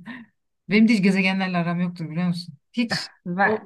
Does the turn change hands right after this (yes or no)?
yes